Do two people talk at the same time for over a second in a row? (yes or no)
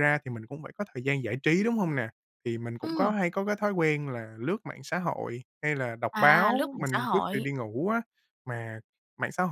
yes